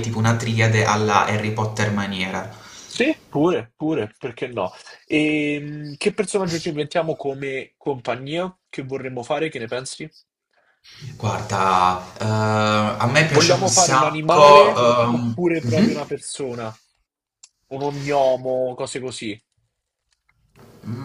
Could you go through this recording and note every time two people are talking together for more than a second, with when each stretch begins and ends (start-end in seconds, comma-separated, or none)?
13.3-16.0